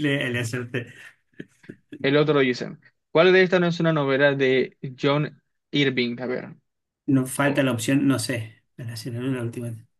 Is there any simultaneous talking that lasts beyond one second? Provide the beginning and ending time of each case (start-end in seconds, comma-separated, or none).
none